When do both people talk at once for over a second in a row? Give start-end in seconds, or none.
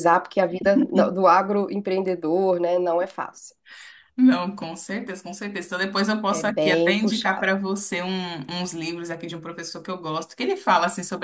6.3-7.5